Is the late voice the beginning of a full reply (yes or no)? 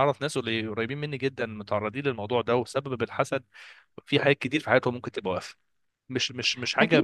yes